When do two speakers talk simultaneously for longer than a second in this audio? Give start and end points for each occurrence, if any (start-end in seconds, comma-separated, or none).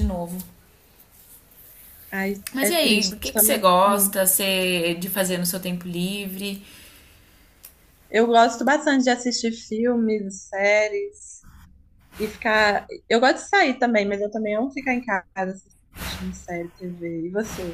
2.5-4.2